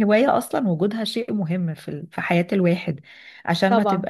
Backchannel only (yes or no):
yes